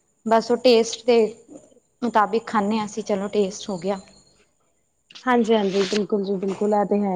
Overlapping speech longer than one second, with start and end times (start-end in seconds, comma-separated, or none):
none